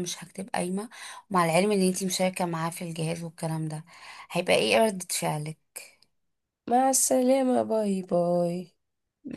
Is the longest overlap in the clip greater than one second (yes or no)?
no